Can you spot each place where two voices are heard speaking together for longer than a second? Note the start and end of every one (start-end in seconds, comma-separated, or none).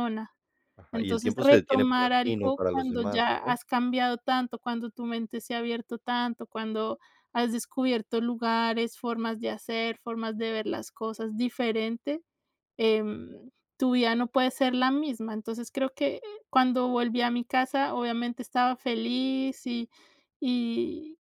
0.9-3.6